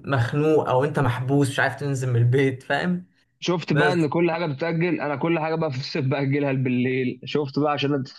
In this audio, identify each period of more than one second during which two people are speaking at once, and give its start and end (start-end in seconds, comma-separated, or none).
none